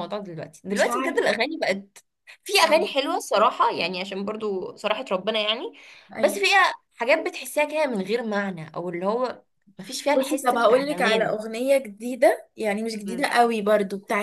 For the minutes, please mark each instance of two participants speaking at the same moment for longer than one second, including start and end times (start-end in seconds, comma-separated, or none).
10.1-11.3